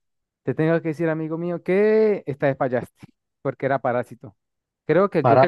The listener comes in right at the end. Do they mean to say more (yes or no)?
no